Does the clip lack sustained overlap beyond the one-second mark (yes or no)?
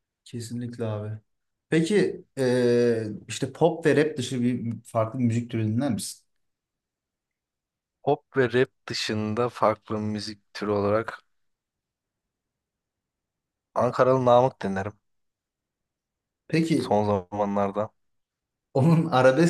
yes